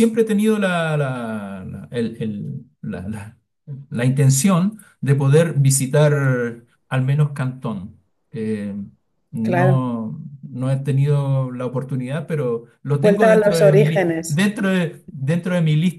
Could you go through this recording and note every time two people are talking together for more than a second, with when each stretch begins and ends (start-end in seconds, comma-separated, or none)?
13.0-14.4